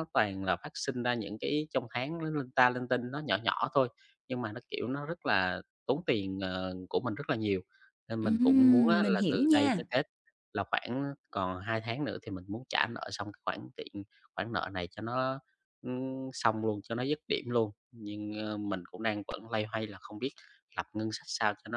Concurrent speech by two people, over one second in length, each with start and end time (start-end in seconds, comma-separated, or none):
8.2-9.8